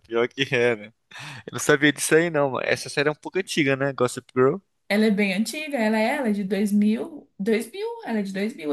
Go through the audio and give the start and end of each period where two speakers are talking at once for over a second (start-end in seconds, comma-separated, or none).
none